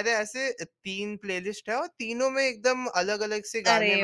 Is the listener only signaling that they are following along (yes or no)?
no